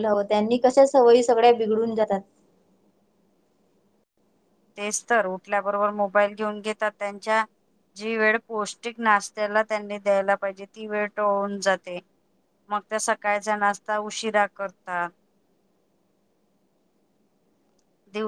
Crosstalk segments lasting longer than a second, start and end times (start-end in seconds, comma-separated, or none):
none